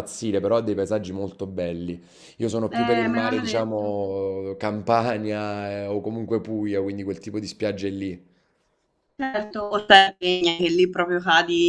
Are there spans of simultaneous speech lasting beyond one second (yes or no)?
yes